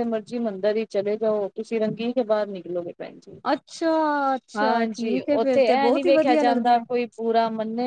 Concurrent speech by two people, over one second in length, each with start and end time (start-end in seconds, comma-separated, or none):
4.6-6.8